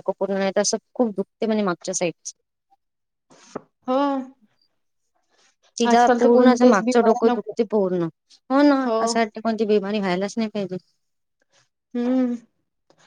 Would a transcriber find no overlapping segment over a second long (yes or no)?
no